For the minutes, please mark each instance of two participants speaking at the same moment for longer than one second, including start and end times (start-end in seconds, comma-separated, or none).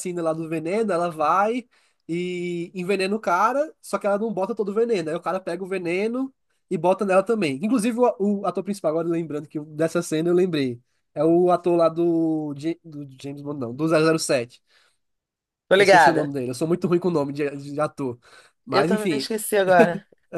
none